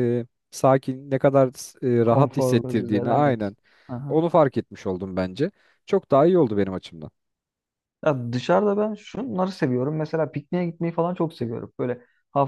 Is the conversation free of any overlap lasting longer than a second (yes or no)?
no